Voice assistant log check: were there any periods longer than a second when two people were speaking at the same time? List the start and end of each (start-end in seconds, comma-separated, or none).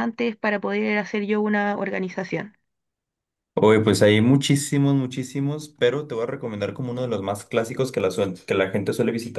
none